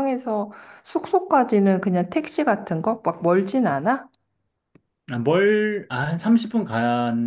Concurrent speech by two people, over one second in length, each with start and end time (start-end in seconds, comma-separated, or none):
none